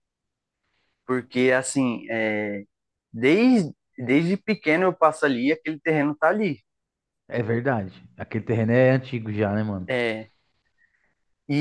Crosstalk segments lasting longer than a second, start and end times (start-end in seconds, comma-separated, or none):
none